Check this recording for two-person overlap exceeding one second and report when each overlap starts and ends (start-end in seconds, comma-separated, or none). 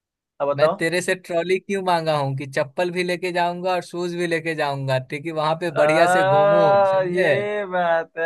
5.8-7.3